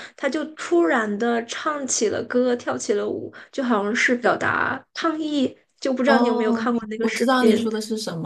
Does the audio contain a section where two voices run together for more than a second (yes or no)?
yes